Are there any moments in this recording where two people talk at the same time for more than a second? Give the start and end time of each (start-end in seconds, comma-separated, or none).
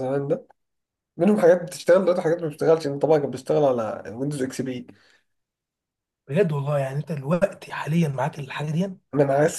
none